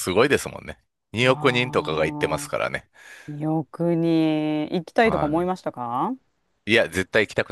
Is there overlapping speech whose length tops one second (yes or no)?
yes